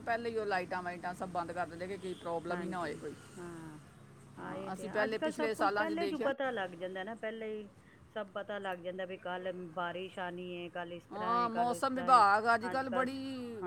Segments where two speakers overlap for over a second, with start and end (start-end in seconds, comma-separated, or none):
4.5-6.3